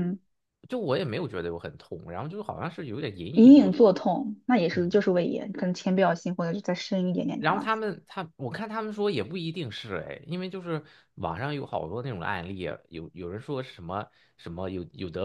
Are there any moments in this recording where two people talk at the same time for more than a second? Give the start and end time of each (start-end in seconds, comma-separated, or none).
none